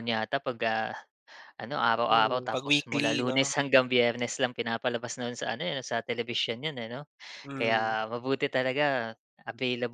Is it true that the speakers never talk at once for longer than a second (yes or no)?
no